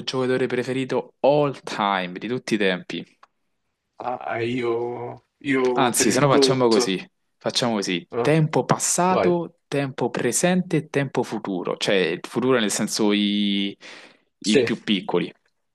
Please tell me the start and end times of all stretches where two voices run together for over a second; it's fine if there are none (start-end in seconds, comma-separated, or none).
5.7-7.0